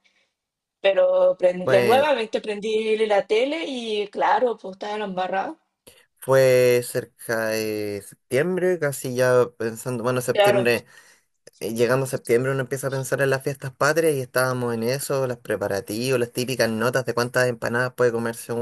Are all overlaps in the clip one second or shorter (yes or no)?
yes